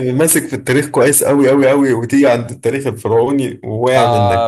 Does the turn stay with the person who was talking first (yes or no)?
no